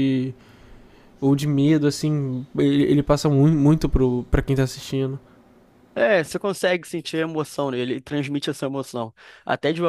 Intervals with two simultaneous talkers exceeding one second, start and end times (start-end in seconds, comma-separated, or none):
none